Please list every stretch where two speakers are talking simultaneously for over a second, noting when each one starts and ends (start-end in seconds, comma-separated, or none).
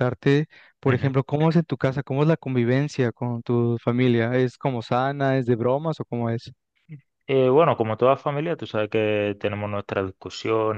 none